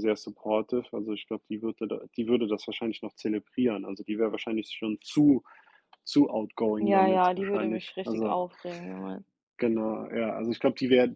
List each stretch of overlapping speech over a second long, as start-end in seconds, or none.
6.8-8.4